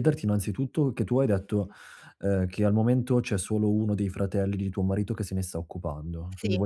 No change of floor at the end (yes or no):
yes